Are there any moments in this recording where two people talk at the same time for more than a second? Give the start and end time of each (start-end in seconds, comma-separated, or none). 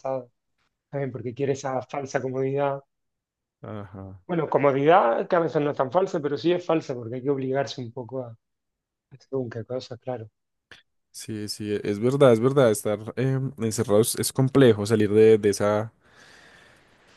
none